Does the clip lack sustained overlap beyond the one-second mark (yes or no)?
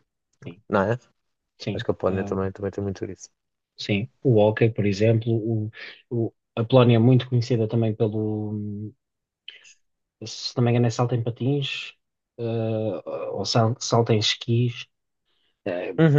yes